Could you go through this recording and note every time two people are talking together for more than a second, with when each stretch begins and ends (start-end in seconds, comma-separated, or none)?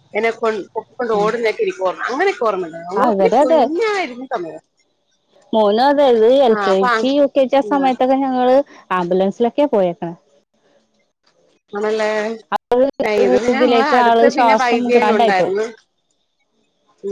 13.5-15.5